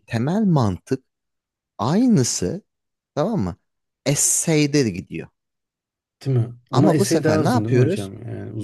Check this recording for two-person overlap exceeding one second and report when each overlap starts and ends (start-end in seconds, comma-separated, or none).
6.7-8.1